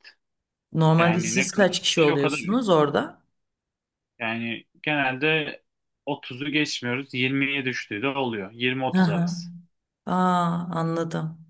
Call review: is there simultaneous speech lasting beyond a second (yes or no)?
yes